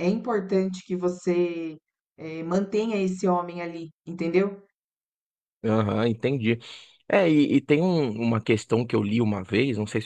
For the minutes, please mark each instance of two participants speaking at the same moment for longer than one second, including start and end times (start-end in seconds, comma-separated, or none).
none